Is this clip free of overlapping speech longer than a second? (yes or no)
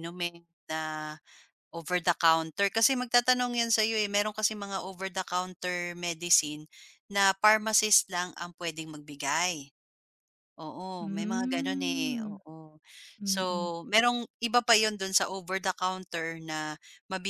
no